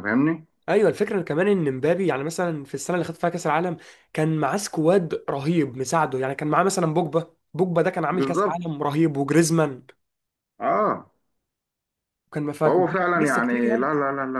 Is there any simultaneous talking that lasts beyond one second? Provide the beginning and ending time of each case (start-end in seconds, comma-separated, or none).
12.6-13.9